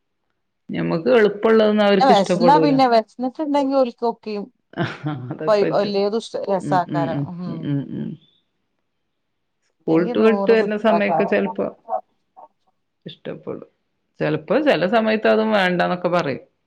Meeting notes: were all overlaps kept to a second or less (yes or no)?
no